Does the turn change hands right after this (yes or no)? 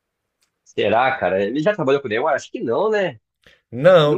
yes